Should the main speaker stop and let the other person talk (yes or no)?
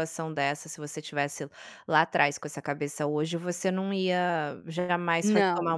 no